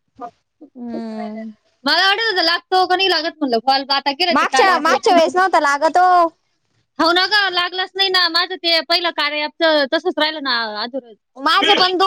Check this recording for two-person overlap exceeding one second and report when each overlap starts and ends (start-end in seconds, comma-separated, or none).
none